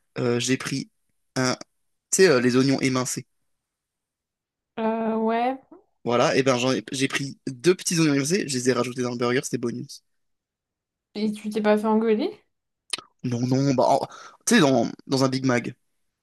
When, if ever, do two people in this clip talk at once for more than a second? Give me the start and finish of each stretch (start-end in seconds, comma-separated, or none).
none